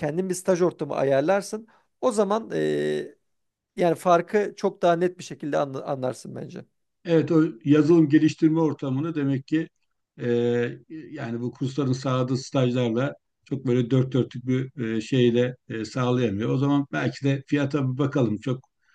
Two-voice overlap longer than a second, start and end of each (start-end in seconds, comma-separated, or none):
none